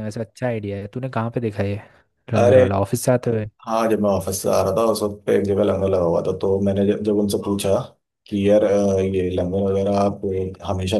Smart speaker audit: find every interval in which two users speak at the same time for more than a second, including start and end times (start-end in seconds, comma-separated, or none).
none